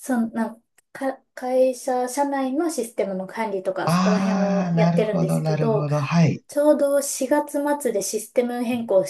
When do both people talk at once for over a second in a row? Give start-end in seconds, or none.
3.9-5.9